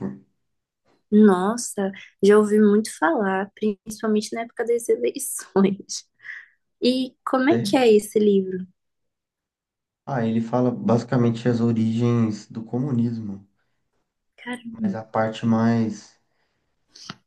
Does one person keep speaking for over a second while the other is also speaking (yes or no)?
no